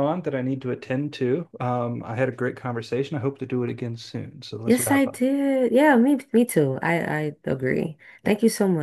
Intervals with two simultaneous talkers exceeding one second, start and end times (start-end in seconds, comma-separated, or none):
none